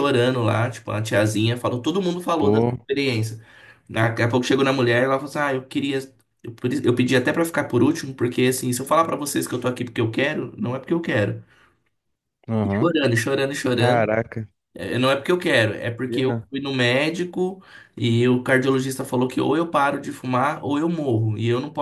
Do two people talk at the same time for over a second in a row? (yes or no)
no